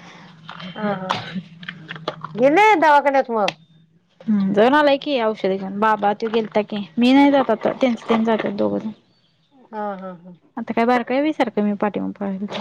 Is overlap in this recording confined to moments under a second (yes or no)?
yes